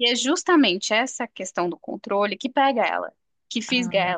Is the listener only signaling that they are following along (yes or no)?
yes